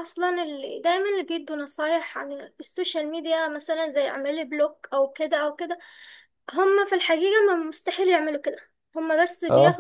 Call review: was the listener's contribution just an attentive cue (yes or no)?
yes